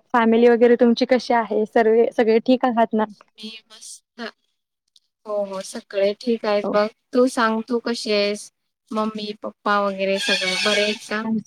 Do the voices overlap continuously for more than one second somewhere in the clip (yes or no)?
no